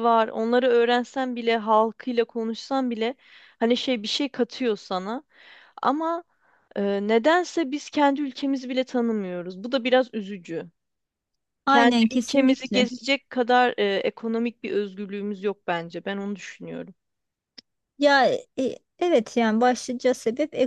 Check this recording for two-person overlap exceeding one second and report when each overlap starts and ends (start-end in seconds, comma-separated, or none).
11.7-12.9